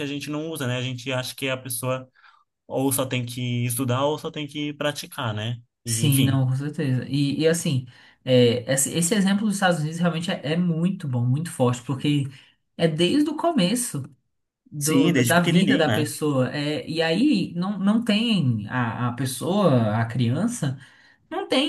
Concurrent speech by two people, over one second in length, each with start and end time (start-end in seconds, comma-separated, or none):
14.8-16.1